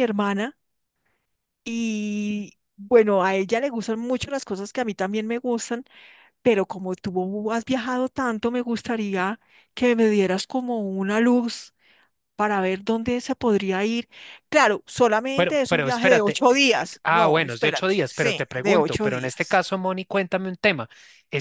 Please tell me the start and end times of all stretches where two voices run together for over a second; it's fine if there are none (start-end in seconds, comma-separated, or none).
15.3-19.6